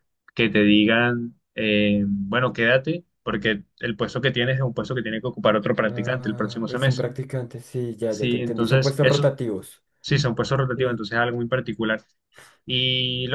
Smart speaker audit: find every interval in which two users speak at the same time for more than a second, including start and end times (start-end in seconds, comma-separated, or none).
5.8-7.1, 8.1-9.3